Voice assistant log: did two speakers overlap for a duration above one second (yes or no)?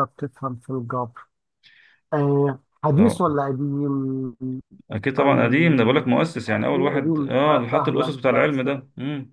yes